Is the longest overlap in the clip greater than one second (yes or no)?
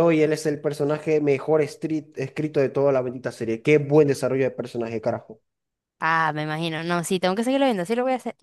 no